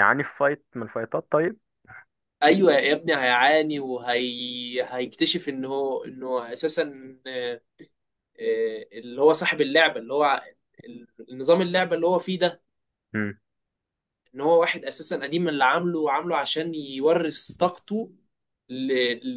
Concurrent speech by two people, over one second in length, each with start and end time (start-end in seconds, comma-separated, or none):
none